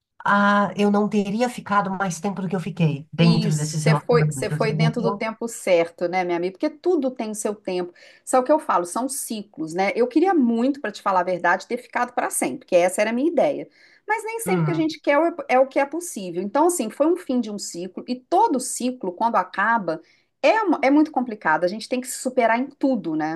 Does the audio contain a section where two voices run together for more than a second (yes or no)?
yes